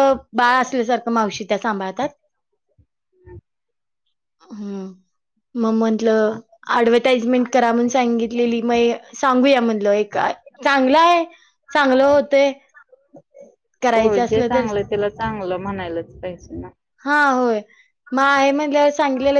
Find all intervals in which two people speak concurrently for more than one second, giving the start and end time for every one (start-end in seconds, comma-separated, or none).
none